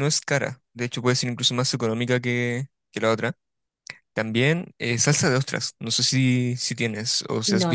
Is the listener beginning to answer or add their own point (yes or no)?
yes